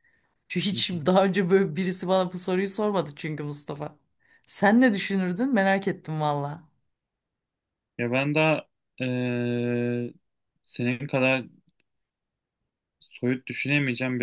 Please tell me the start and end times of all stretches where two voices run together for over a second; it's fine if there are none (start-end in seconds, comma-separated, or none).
none